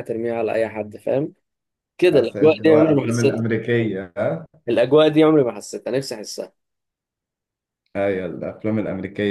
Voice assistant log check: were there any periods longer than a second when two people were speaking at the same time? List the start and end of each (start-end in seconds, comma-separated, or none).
2.1-3.5